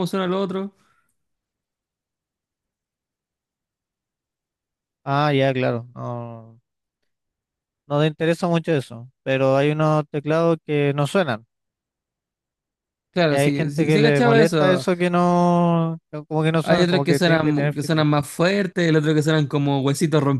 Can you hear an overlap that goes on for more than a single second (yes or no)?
yes